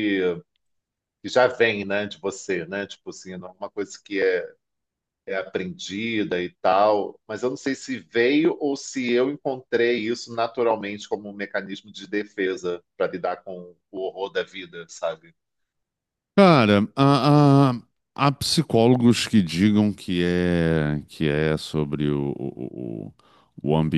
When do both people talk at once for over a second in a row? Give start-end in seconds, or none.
none